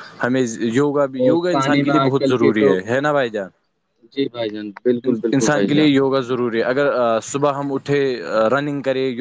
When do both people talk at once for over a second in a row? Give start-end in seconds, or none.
1.2-2.8